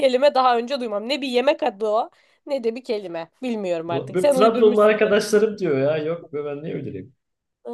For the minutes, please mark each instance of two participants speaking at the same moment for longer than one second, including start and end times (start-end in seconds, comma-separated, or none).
3.9-5.2